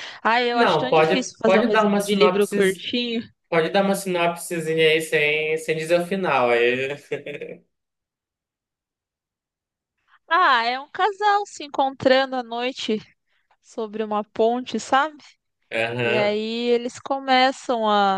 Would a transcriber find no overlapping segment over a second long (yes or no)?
no